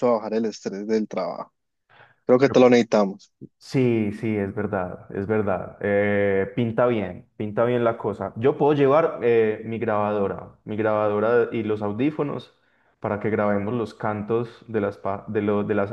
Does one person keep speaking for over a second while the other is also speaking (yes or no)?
no